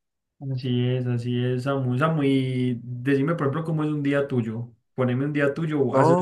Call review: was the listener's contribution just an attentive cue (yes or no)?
no